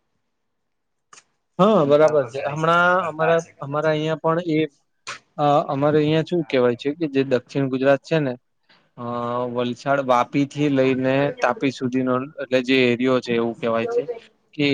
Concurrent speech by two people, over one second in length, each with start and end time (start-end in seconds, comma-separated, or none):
1.9-3.8